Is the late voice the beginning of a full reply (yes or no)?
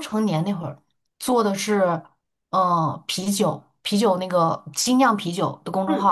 yes